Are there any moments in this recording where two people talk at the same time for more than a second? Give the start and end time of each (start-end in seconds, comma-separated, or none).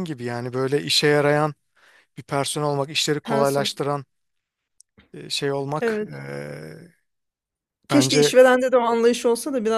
none